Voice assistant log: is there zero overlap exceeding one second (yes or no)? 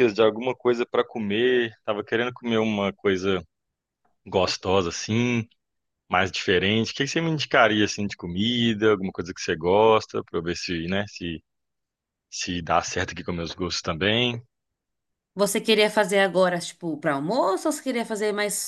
yes